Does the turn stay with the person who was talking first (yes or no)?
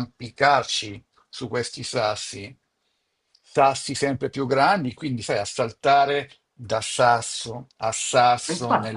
no